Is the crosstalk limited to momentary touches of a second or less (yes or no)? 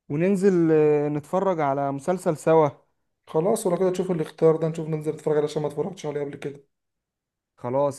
yes